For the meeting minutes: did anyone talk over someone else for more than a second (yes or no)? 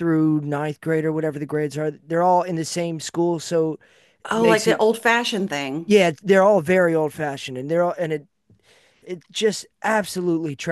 no